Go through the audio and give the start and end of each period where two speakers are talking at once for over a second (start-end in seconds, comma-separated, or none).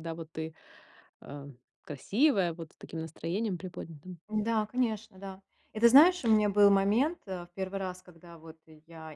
none